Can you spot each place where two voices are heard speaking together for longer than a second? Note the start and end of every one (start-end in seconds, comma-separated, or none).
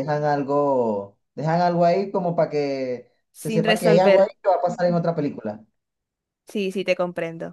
3.3-5.0